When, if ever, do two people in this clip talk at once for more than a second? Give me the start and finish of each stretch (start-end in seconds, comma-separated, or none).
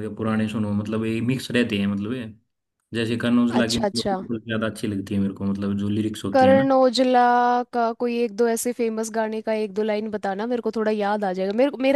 none